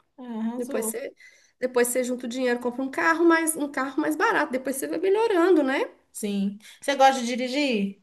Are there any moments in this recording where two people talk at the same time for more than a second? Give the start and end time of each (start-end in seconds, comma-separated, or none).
none